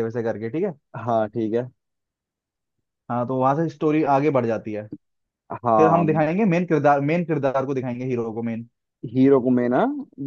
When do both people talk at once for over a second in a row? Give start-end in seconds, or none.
none